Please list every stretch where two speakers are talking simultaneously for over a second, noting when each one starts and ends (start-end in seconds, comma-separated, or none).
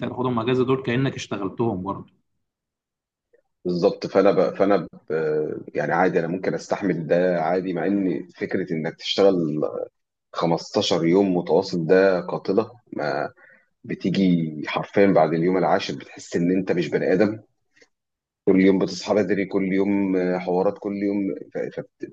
none